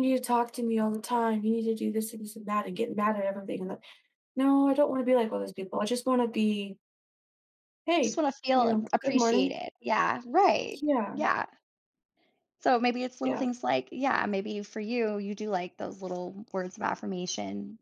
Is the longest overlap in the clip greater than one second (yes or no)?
yes